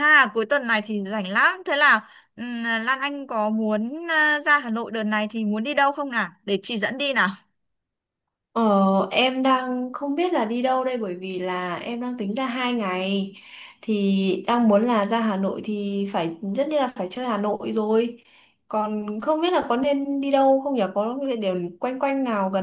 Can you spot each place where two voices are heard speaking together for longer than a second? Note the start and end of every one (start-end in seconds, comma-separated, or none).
none